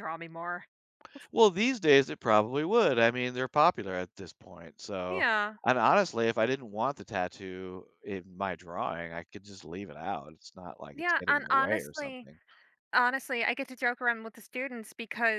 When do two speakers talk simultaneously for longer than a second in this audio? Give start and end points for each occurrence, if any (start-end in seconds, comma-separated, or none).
10.9-12.3